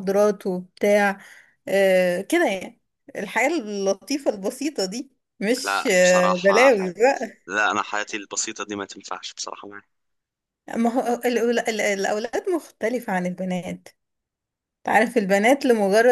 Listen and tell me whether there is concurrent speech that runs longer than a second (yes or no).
yes